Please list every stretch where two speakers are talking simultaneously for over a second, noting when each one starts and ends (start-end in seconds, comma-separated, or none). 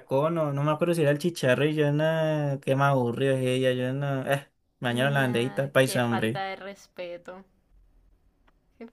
5.2-6.4